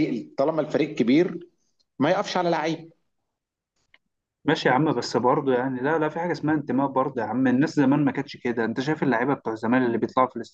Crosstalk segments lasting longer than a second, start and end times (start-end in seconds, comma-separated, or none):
none